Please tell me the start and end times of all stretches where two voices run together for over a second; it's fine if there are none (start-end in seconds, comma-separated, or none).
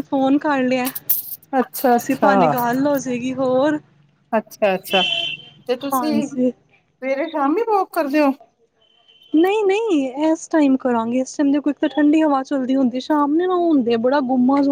none